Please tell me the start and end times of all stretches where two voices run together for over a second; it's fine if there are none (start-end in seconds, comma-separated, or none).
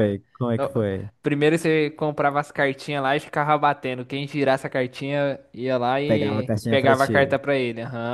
6.0-7.4